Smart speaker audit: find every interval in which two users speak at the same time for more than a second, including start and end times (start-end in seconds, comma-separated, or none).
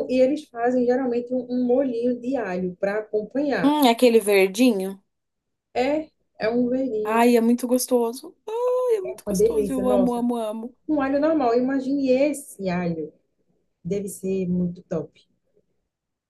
9.0-10.3